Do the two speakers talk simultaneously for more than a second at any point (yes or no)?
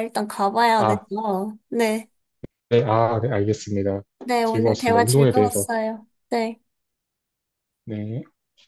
yes